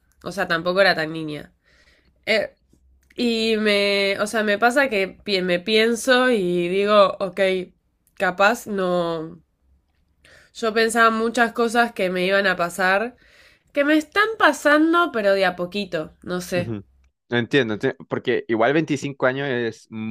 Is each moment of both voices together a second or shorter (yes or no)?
yes